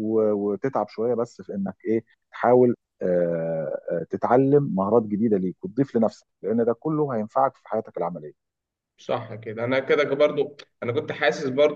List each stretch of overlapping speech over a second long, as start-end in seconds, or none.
none